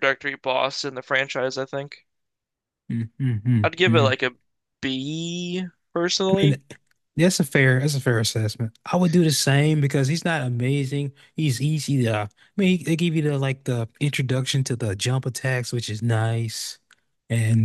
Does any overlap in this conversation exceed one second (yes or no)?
no